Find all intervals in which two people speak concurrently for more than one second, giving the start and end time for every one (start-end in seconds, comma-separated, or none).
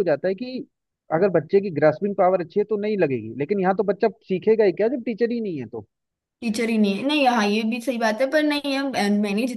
none